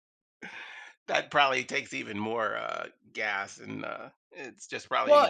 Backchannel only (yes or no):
no